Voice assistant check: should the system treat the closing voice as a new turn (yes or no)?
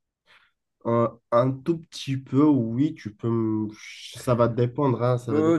yes